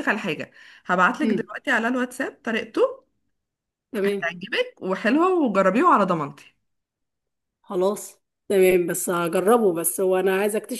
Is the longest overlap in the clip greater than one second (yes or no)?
no